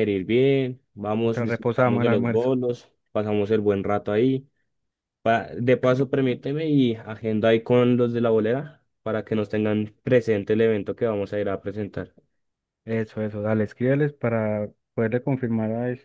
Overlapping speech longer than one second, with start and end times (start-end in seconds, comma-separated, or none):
1.2-2.5